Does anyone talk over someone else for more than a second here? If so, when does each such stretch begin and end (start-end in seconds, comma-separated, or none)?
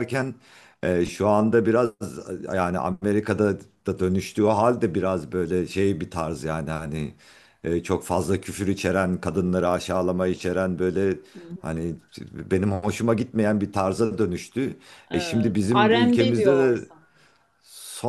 15.1-16.9